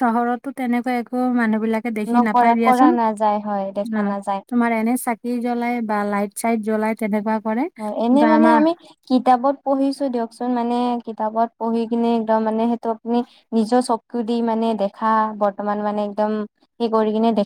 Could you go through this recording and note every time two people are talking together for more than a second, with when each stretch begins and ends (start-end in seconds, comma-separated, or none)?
2.1-4.0